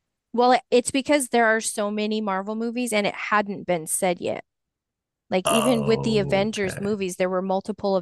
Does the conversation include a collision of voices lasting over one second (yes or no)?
yes